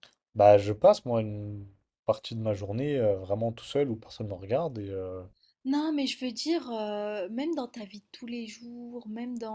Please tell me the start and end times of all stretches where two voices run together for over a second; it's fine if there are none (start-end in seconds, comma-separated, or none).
none